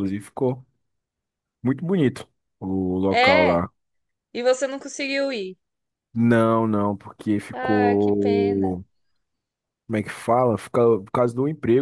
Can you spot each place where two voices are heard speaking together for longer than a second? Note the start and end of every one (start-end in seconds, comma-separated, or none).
7.5-8.8